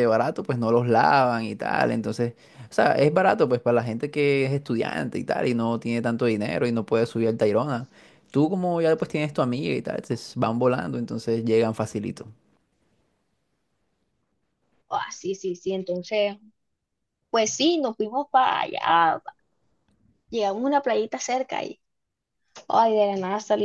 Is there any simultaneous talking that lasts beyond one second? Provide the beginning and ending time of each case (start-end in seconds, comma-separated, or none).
none